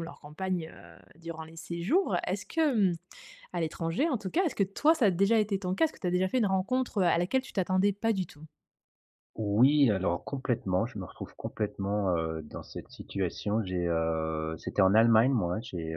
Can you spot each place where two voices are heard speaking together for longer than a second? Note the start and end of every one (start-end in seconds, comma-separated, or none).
none